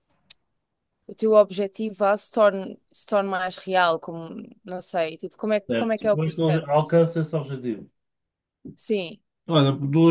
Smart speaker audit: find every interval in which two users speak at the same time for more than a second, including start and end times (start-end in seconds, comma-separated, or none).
5.7-7.0